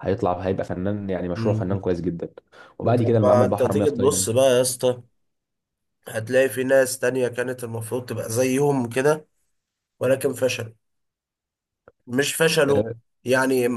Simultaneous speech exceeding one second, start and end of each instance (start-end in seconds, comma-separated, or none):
2.8-4.3